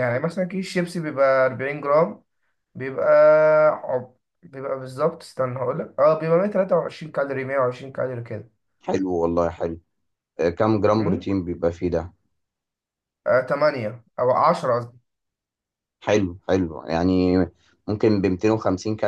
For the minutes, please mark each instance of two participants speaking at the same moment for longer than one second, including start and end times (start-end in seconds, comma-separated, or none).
none